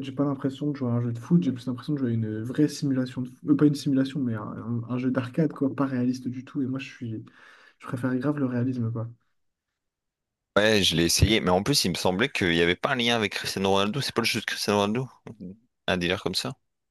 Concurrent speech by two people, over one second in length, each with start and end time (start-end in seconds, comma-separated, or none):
none